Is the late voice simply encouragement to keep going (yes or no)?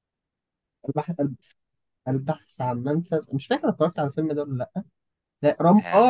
yes